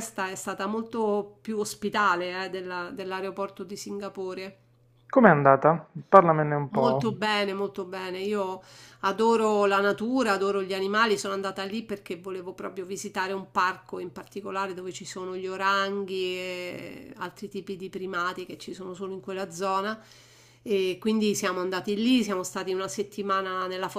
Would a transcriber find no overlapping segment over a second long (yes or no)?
yes